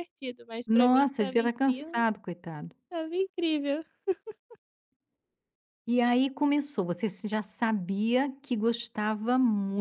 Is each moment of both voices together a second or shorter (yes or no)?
no